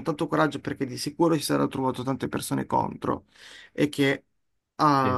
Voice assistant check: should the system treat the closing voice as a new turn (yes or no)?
no